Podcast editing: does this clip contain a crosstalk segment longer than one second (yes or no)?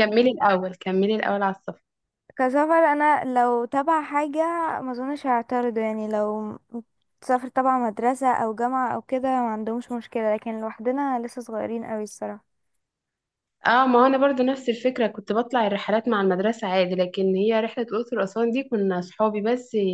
no